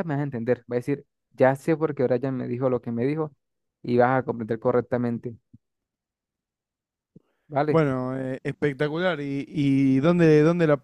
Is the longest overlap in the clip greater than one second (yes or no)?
no